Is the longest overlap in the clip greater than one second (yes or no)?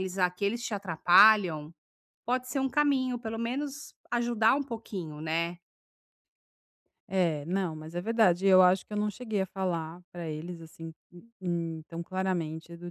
no